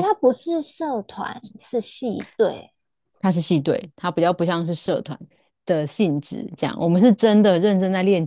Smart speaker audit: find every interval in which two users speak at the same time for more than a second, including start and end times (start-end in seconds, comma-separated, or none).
none